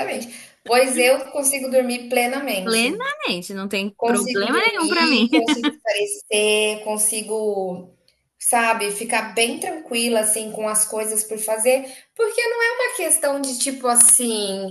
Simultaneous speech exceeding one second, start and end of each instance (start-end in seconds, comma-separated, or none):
4.0-5.3